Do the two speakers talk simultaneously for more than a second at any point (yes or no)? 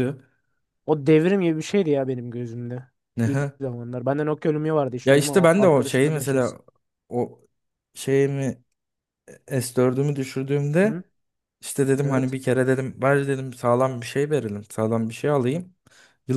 yes